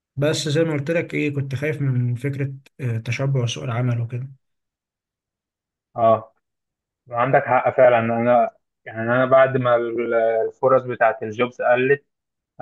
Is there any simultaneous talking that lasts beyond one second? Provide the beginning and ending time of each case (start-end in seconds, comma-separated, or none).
none